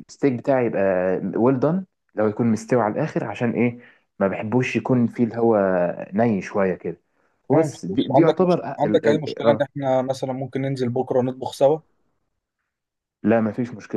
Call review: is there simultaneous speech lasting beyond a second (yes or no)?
yes